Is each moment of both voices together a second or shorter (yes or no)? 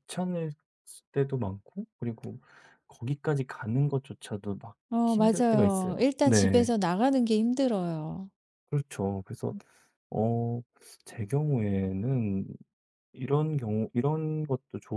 no